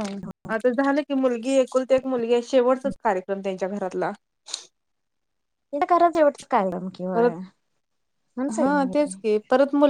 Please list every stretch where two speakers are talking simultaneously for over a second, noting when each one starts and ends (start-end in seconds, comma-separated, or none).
none